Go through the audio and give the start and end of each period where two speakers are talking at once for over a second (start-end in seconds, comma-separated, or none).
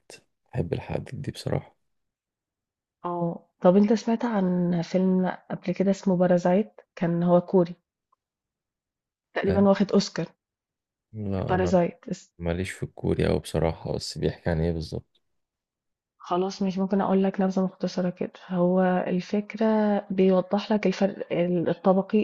none